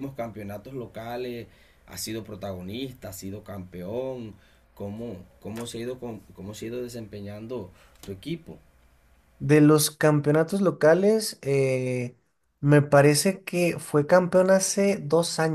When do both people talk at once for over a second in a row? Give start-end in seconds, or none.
none